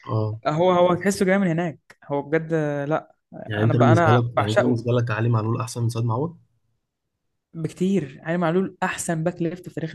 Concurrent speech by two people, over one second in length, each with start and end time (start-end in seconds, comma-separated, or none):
3.6-4.9